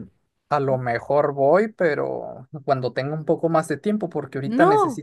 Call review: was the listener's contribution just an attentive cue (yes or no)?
yes